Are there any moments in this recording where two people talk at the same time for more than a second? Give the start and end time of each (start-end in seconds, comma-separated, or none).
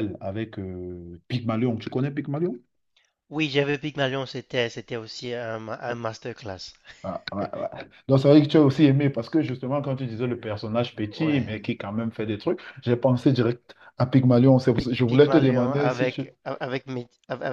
14.8-16.2